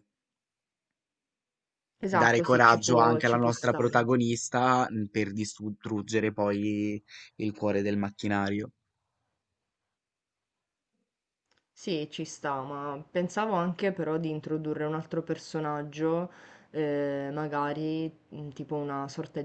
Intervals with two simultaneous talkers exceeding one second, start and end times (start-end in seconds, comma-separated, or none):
2.1-4.0